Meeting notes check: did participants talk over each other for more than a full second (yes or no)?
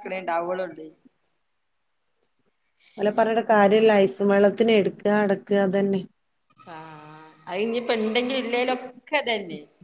no